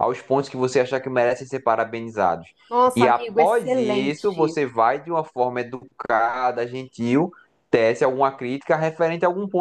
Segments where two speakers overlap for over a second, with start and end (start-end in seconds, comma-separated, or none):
2.9-4.6